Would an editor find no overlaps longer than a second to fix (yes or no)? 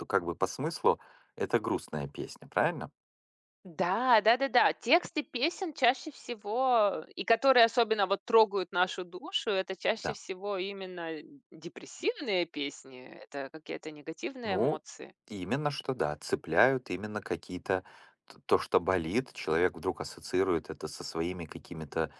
yes